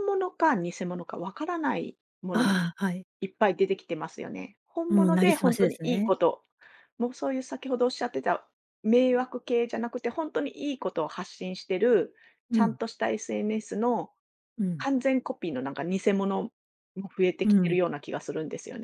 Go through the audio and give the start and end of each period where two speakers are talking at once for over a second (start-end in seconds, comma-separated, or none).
4.9-6.1